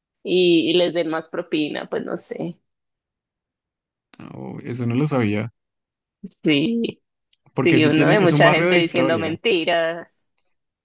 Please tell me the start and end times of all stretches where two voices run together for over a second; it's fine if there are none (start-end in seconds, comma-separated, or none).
7.6-9.3